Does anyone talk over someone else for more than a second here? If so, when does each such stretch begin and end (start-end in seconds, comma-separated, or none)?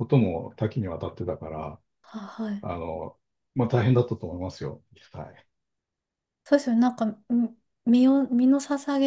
none